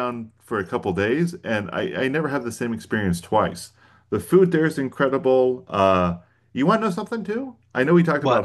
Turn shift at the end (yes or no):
no